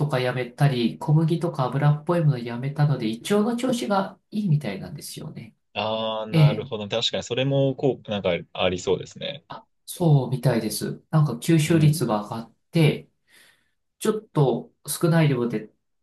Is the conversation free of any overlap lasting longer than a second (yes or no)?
yes